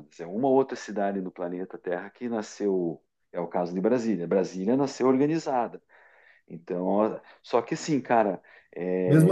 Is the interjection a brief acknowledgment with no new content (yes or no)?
no